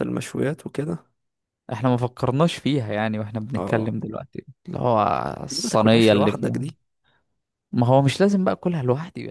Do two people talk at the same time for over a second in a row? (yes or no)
yes